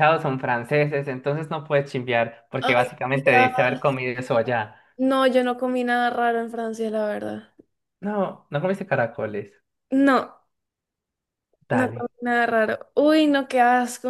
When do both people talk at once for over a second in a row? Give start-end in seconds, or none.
2.6-4.0